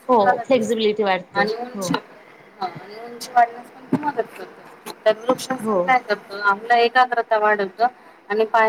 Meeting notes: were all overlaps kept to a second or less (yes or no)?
yes